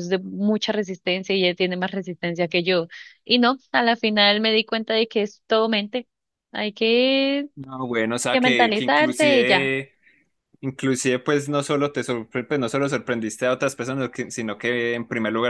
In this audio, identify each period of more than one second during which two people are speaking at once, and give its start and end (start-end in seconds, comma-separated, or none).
8.3-9.7